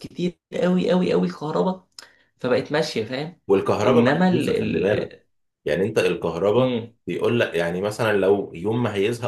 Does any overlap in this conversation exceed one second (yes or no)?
yes